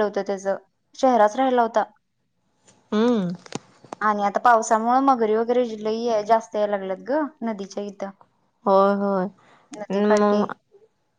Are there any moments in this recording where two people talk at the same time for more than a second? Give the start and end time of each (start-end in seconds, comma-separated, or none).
none